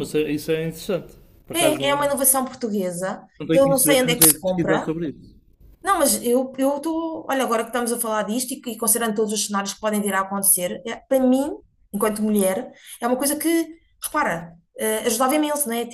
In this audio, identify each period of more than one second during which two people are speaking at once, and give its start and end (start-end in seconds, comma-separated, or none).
3.4-4.9